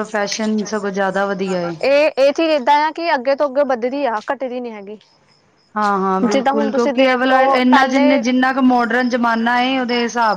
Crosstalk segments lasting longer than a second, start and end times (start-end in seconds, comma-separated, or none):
6.3-8.2